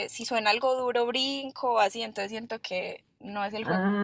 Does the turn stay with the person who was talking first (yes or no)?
no